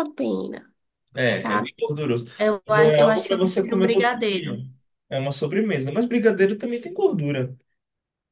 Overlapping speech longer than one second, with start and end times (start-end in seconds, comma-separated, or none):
2.7-4.6